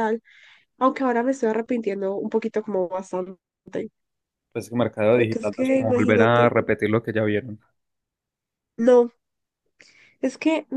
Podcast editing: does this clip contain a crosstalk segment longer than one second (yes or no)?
yes